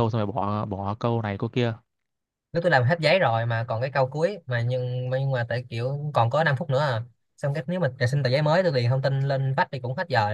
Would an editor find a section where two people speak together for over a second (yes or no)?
no